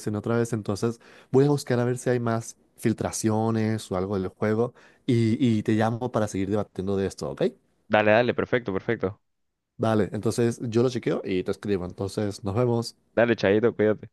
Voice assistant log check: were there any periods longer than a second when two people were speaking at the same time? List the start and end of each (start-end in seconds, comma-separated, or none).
none